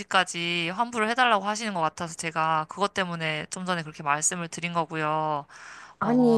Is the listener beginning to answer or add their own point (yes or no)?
yes